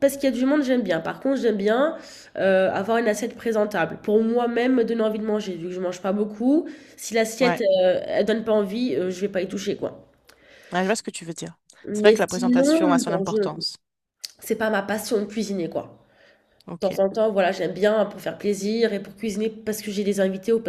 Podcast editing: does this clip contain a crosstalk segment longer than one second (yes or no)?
yes